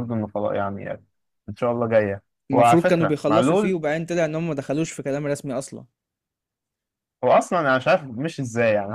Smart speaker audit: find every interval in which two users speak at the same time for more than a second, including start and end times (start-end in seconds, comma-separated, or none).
2.5-3.8